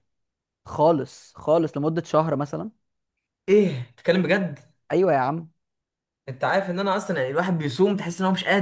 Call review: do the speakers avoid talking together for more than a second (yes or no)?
yes